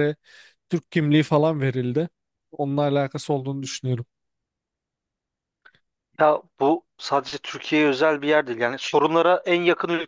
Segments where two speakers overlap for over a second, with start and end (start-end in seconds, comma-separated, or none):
none